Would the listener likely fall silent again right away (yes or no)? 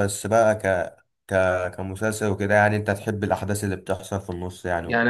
no